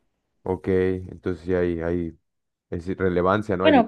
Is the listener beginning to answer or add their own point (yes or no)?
yes